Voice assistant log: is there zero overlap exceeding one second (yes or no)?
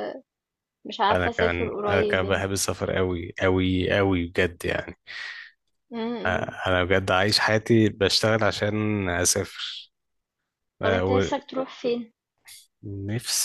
no